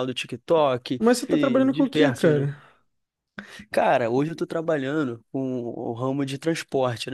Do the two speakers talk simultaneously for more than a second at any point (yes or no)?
yes